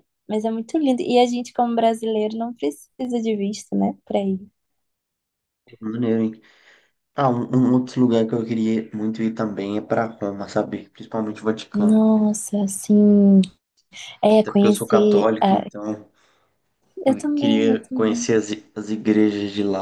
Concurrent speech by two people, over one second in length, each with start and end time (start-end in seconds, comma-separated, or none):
14.3-15.6, 17.1-18.3